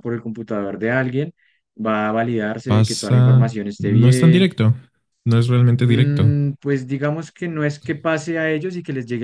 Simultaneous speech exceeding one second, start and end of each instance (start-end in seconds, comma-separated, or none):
2.6-4.5